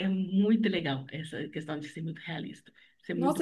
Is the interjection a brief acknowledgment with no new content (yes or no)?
no